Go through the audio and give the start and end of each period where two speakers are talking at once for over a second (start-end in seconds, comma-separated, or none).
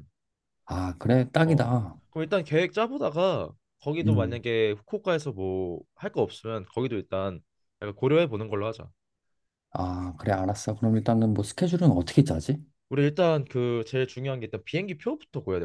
none